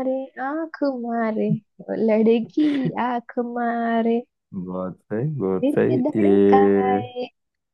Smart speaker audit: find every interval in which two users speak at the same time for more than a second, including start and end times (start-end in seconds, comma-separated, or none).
5.5-7.0